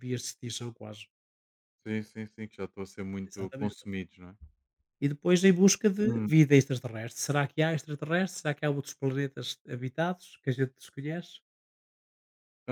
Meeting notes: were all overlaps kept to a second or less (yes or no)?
yes